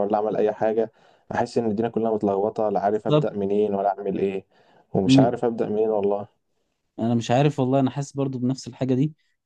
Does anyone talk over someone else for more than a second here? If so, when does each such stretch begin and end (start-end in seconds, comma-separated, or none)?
none